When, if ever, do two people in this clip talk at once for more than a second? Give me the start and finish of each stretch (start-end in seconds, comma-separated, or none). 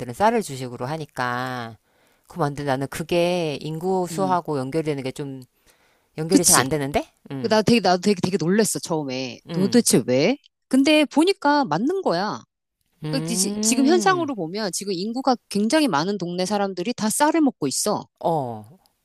13.1-14.3